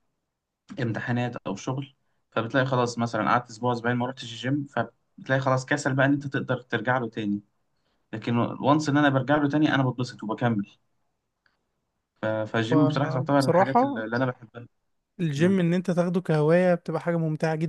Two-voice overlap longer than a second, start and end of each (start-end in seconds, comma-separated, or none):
12.7-14.0